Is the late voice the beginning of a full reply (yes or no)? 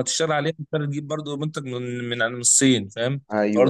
no